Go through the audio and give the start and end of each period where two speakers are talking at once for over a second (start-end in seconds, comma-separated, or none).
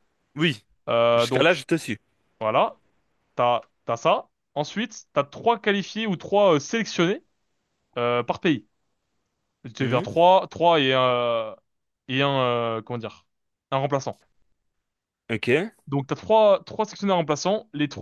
none